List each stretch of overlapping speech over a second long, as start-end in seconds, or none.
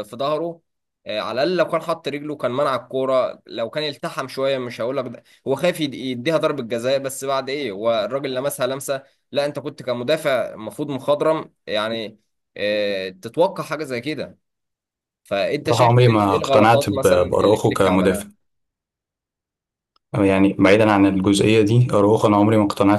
15.7-18.3